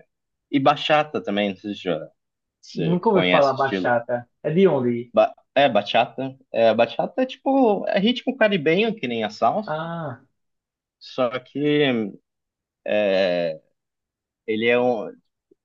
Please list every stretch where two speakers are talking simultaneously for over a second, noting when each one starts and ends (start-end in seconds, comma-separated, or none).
2.7-3.9